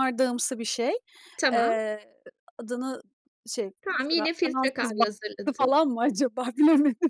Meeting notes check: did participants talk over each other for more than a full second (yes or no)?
yes